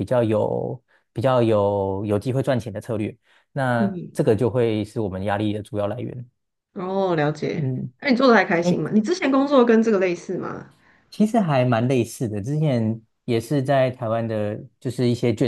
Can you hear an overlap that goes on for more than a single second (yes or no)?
no